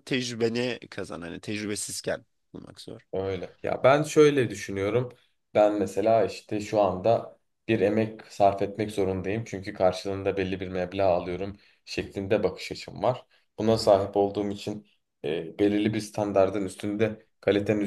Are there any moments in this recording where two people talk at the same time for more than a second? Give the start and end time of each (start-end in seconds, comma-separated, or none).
none